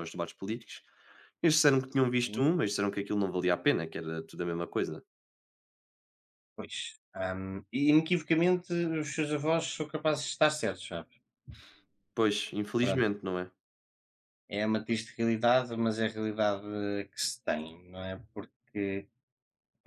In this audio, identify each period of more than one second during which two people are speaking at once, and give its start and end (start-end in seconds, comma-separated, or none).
none